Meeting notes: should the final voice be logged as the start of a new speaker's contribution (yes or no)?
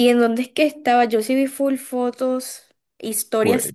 no